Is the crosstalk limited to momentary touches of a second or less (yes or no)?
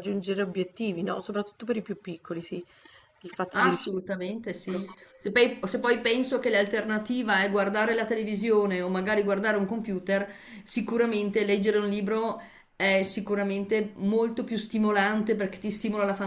no